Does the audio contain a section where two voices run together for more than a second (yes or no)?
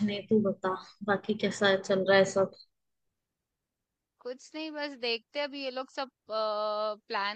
no